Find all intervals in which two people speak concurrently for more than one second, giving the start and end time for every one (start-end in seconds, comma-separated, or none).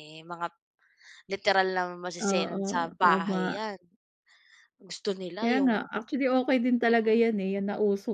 2.2-3.6